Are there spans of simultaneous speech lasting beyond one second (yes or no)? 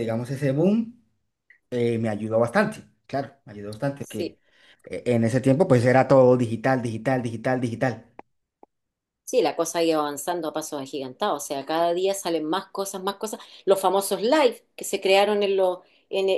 no